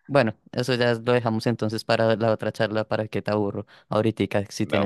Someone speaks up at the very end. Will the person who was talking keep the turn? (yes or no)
no